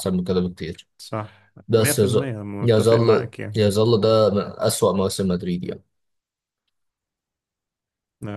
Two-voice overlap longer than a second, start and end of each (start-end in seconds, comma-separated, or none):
1.7-3.6